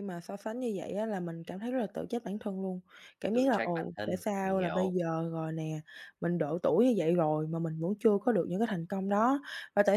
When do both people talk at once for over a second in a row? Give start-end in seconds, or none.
3.3-4.9